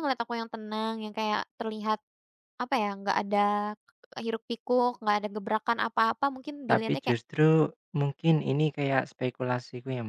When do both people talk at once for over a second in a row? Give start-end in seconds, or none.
none